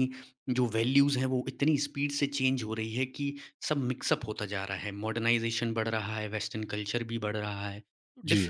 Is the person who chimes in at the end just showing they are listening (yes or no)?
yes